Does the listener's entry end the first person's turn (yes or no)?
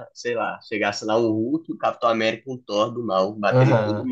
yes